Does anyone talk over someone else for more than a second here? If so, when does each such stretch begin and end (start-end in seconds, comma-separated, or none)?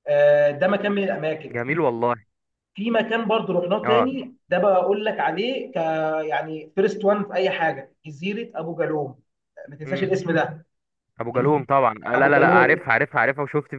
none